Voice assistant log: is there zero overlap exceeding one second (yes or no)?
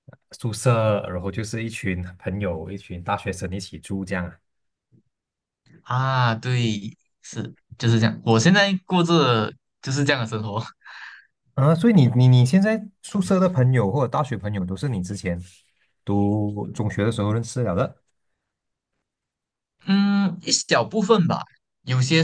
yes